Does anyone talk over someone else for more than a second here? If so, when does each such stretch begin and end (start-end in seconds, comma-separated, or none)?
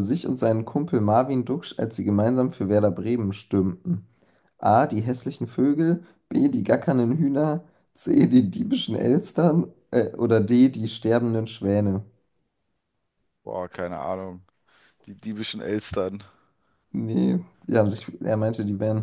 none